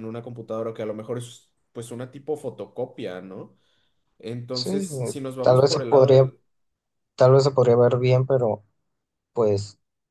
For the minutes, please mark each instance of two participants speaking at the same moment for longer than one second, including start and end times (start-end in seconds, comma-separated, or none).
4.5-6.3